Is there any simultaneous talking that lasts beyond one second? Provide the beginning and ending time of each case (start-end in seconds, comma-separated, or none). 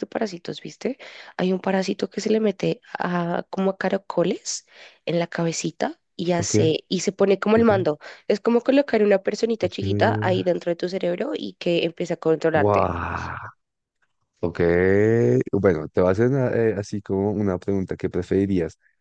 none